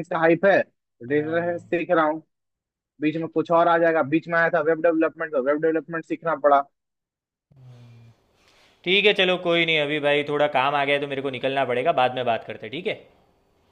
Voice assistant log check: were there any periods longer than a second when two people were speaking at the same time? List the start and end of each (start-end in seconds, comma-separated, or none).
none